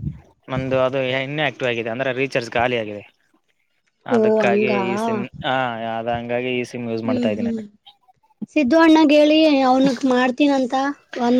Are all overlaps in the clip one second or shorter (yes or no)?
yes